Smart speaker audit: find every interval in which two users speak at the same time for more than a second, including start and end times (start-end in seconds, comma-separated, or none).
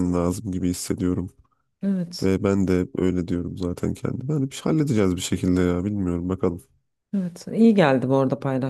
none